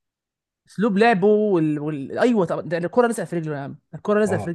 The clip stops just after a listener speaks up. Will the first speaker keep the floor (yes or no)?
no